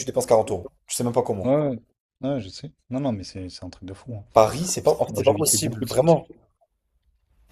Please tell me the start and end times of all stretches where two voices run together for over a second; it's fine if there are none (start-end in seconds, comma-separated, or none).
4.8-6.2